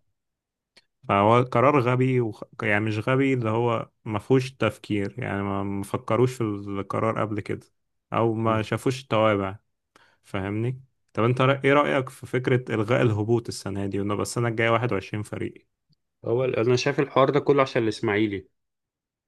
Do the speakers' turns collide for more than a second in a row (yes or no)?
no